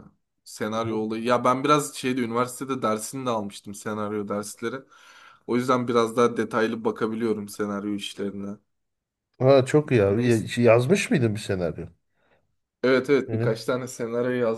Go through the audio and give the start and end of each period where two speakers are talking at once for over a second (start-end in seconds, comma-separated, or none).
none